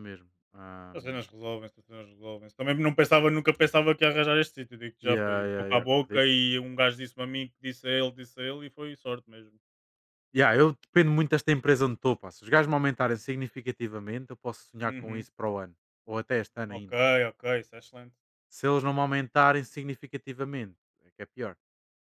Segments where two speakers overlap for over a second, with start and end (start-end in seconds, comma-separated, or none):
5.0-6.3